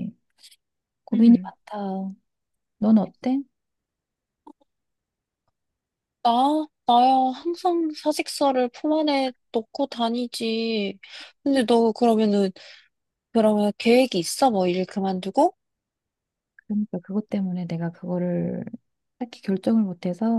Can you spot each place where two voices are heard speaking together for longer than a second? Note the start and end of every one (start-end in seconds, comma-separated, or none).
none